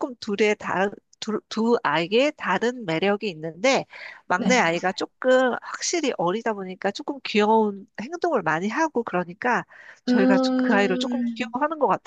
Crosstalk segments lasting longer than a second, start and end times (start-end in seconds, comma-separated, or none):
10.1-11.5